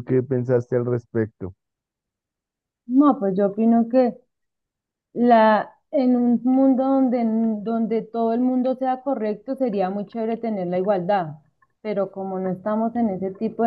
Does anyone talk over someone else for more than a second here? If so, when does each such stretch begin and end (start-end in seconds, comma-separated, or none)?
none